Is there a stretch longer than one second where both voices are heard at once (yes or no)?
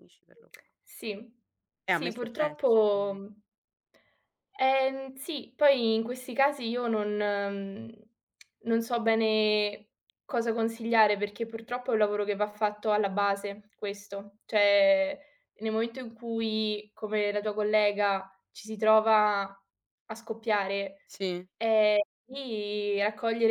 yes